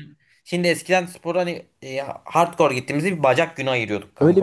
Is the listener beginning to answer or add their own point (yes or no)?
yes